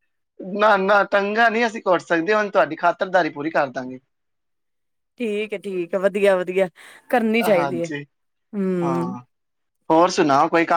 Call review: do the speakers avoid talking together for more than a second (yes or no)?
yes